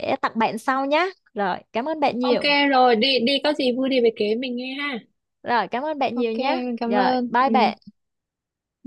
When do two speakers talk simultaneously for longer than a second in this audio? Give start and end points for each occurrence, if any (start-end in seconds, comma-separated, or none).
6.1-7.7